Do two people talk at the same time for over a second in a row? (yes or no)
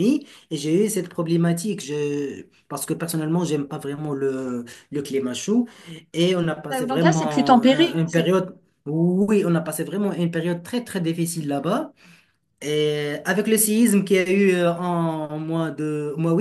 yes